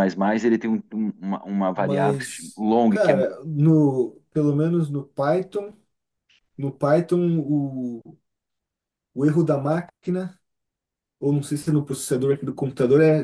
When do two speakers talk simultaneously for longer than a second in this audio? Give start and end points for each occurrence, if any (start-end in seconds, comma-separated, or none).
1.7-3.1